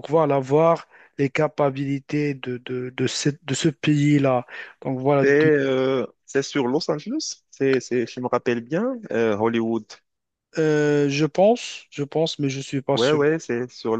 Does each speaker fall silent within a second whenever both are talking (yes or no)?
yes